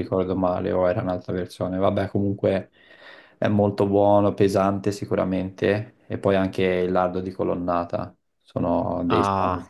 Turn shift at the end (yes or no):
yes